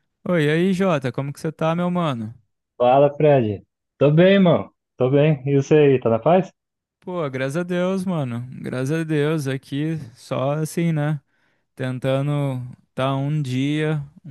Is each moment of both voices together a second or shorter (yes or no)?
yes